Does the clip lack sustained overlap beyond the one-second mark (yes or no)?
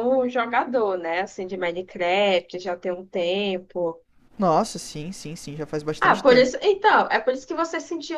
yes